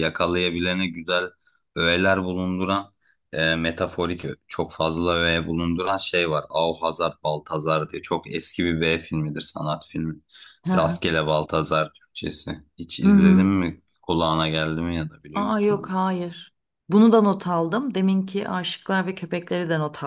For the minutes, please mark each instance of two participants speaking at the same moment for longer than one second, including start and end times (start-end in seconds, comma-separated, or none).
none